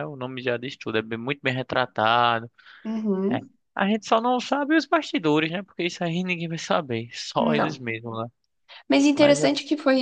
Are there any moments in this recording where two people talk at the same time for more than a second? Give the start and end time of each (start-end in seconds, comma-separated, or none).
none